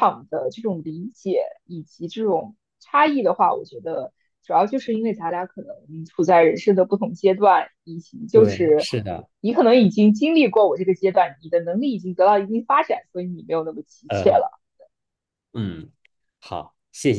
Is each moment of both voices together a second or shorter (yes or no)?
yes